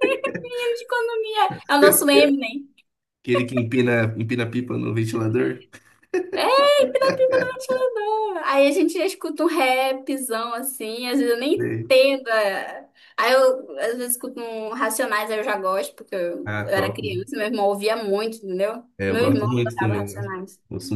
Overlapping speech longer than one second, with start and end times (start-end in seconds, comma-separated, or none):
19.0-20.3